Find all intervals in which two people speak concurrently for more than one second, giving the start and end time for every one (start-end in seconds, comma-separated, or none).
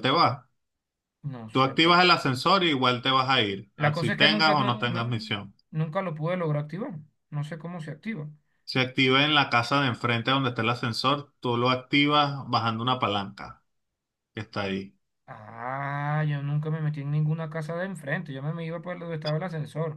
3.8-5.3